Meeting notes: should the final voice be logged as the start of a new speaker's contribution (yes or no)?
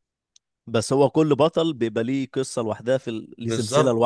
yes